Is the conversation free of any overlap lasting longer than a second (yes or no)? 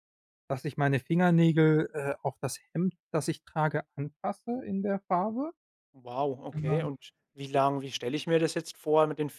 yes